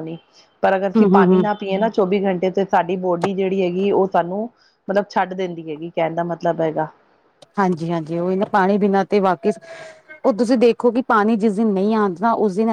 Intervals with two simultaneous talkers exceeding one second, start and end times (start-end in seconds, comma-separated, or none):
none